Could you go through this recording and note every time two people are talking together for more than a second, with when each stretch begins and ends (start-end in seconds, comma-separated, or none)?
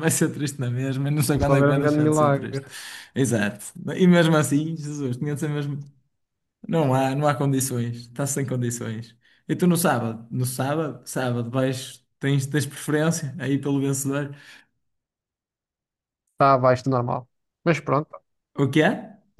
1.3-2.6